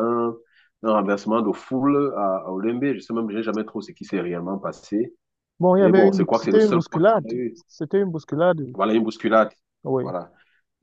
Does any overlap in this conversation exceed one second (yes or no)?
yes